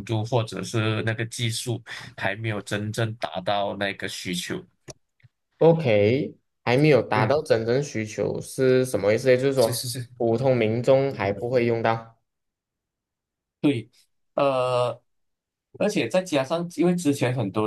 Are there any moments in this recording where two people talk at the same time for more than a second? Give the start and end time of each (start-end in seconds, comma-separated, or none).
none